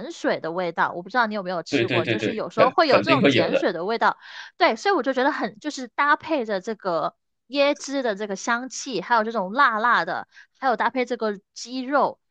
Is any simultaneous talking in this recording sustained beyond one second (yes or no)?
yes